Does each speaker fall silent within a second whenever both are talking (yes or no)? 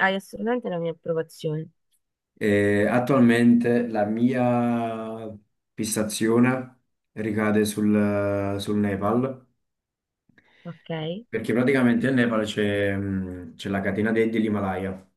yes